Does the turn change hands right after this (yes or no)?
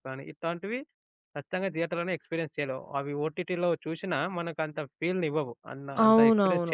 yes